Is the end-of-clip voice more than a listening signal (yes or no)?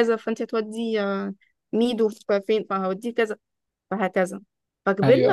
no